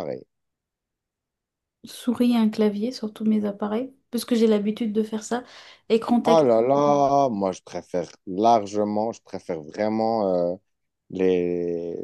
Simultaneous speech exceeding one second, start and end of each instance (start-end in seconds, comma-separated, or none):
none